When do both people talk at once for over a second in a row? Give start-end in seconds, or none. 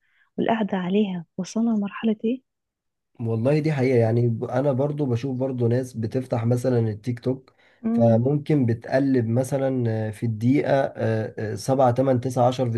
none